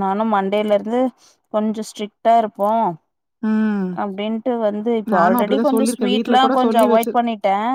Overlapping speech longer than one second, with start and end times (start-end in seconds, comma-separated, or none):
5.2-7.2